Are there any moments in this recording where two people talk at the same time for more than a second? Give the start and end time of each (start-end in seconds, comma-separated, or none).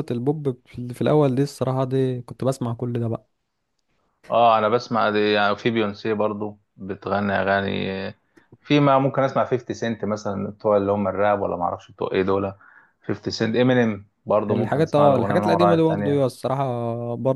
14.5-16.2